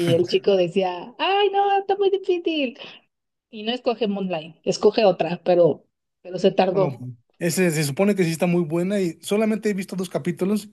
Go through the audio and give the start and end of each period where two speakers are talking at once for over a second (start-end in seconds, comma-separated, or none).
none